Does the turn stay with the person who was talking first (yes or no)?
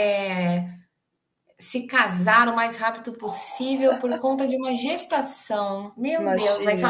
yes